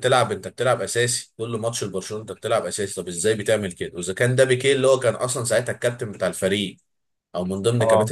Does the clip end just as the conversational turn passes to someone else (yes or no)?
no